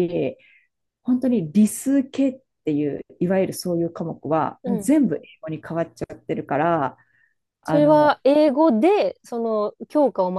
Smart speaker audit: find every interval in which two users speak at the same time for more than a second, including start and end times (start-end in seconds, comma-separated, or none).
none